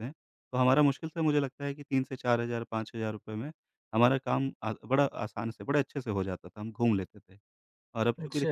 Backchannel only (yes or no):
yes